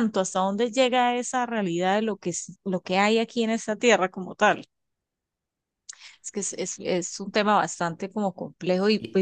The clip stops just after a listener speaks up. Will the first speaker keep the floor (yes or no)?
yes